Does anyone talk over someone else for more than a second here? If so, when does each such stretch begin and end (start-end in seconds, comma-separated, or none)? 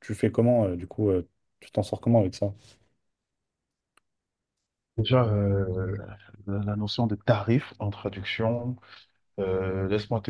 none